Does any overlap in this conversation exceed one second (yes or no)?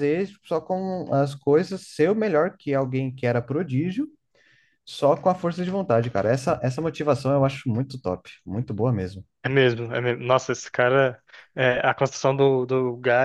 no